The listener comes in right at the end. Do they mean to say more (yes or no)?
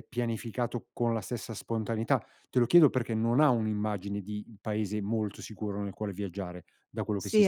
yes